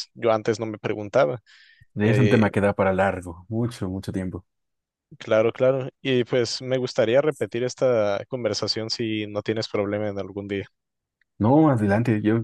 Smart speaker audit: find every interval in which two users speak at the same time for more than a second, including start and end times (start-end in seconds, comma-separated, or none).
none